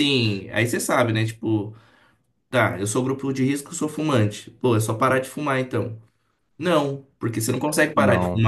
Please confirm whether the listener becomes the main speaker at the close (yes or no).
no